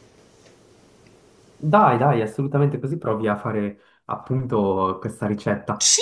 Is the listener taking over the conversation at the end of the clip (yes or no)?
yes